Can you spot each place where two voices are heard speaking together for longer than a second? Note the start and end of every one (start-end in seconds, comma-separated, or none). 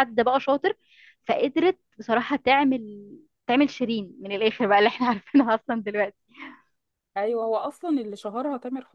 none